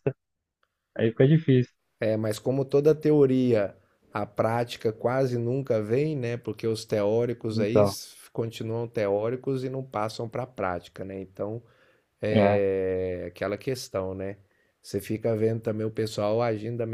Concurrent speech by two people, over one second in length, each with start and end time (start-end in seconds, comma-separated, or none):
none